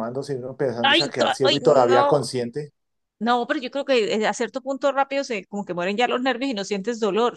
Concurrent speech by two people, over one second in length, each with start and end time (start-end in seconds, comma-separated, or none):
0.8-2.2